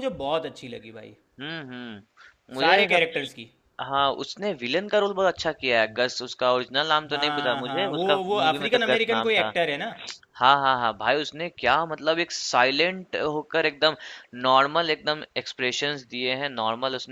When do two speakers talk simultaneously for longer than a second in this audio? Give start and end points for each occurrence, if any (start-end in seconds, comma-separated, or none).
7.1-9.5